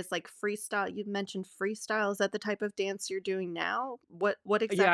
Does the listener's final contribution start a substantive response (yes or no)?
yes